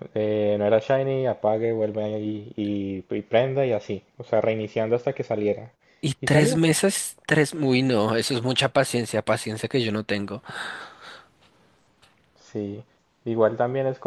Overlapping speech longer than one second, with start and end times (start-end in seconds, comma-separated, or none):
none